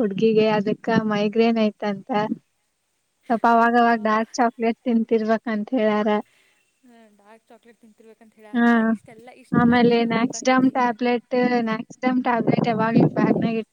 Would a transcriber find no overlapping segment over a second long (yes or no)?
yes